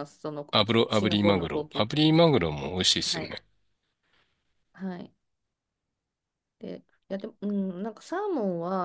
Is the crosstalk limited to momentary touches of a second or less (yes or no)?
no